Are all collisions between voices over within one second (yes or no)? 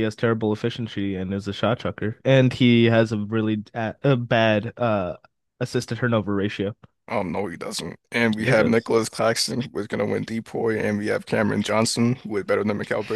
yes